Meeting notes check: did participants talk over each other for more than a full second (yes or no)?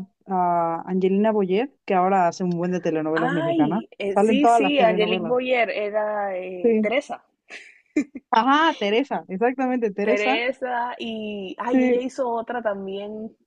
yes